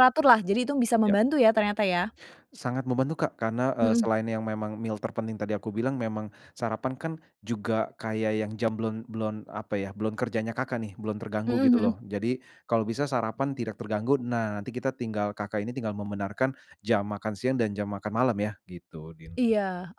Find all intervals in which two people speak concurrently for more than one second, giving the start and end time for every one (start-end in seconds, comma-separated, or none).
none